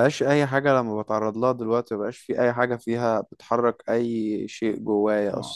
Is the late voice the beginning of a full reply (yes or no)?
yes